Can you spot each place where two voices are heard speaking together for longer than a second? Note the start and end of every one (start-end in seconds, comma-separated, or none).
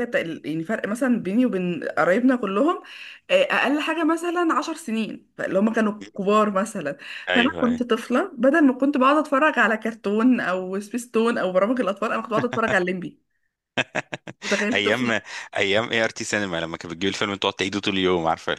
none